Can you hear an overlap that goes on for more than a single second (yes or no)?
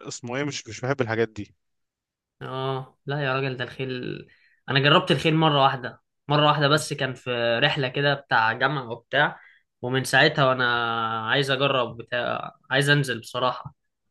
no